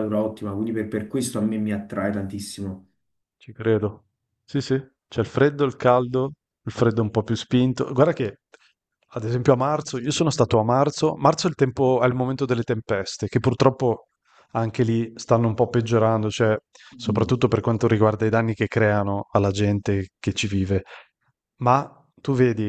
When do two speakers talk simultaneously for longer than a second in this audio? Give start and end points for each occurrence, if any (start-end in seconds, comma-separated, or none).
none